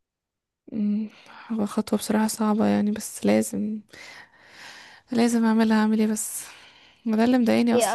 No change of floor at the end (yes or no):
yes